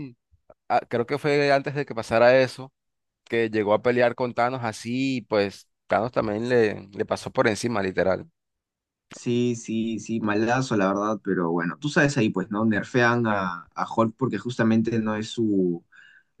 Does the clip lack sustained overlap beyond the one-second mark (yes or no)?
yes